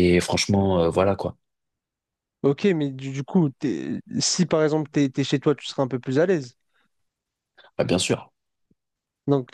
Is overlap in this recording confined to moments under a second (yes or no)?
yes